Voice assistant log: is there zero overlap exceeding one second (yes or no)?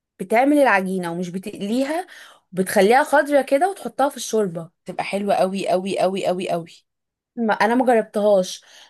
yes